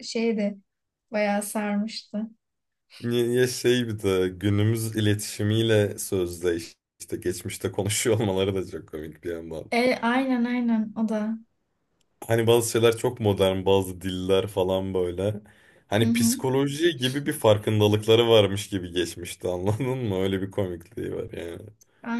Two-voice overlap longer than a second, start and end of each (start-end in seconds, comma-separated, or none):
none